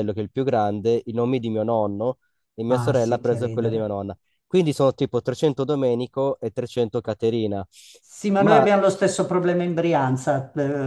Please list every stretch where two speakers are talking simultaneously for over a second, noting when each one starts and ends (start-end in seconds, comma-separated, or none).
2.7-4.0